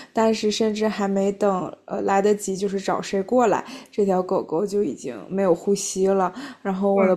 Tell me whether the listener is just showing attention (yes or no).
yes